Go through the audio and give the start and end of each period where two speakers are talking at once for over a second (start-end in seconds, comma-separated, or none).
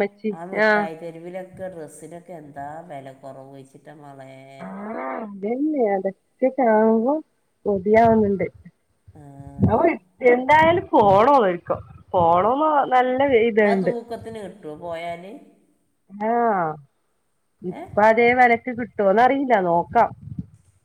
none